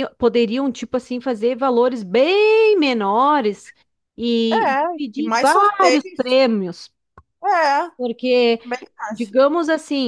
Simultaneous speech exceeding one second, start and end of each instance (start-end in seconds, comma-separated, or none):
4.5-6.4